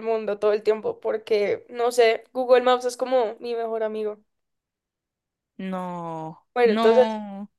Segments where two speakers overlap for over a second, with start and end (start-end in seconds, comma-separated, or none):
none